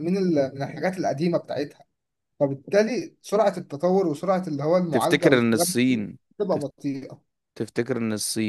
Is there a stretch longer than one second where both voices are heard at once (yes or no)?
yes